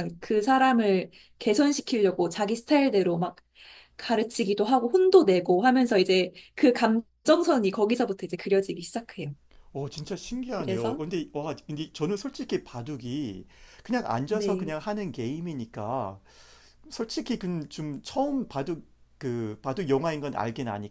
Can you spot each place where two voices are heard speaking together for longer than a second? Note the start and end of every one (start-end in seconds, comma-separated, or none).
none